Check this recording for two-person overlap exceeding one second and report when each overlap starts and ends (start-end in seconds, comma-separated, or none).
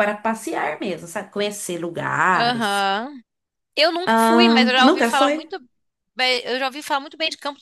4.1-5.5